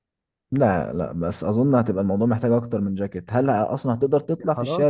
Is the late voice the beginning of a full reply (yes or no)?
yes